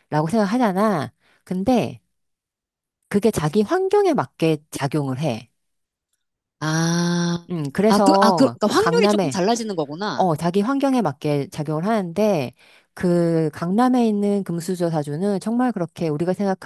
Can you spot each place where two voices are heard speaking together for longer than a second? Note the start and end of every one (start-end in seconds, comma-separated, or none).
7.9-9.4